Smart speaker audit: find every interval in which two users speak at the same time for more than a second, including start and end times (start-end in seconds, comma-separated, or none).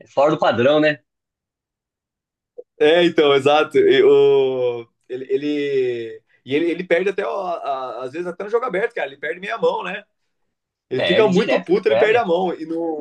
10.9-12.2